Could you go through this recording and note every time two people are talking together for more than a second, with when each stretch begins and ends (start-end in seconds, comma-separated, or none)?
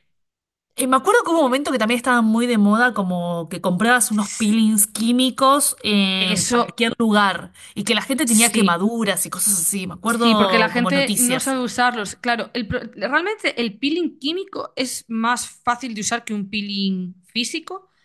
10.1-11.6